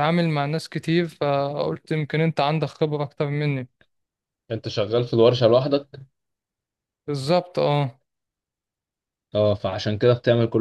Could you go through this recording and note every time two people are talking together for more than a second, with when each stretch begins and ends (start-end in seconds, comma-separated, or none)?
none